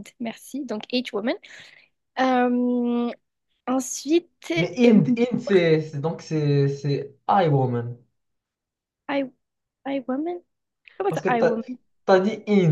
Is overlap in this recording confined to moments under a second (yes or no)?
yes